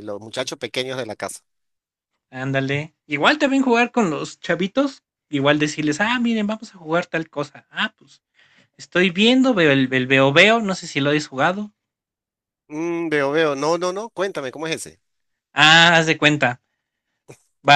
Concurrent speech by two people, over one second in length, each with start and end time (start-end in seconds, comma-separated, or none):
none